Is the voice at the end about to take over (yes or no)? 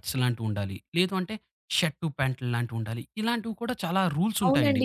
yes